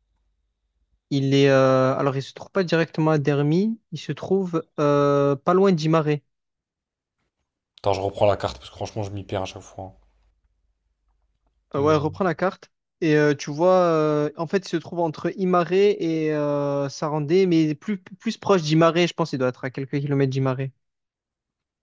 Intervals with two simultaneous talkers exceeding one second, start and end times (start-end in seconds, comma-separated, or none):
none